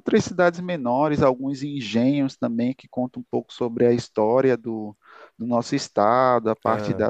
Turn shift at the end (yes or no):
no